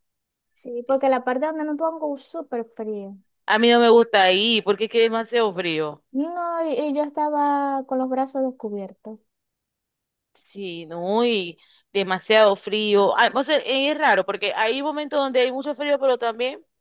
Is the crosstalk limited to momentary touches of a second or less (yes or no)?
yes